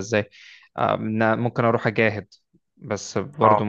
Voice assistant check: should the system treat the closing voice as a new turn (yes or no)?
no